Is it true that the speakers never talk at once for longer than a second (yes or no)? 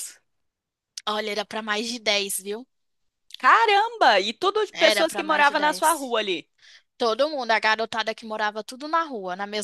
no